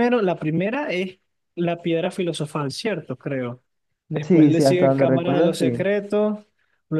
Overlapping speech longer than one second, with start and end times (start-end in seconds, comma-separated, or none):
4.2-5.9